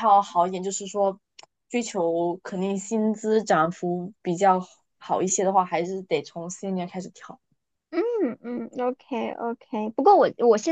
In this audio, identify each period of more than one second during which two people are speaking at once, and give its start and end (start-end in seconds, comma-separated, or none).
none